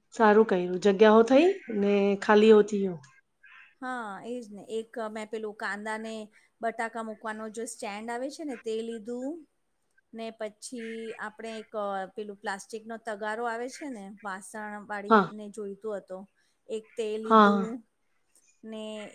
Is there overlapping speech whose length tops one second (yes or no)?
no